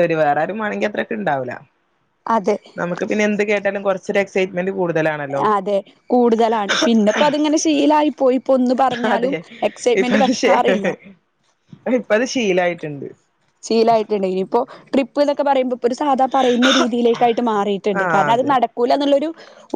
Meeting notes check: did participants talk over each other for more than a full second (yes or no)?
no